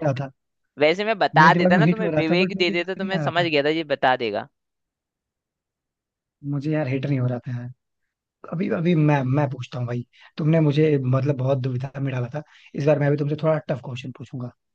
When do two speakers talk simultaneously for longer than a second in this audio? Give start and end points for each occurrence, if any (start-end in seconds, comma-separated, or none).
1.4-3.5